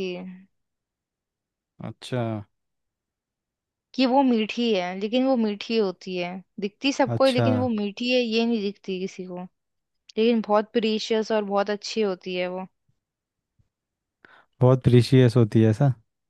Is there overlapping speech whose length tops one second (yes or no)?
no